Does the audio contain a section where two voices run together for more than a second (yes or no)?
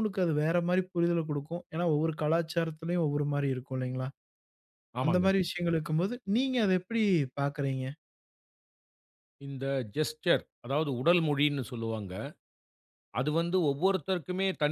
no